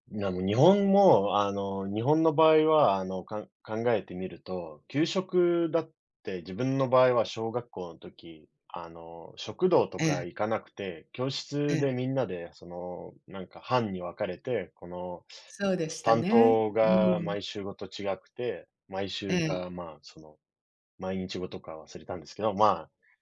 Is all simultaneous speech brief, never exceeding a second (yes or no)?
no